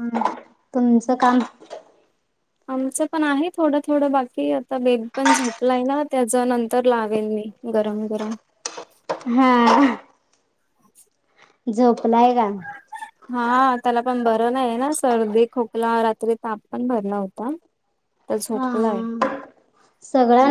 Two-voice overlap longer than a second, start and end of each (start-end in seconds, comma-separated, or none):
none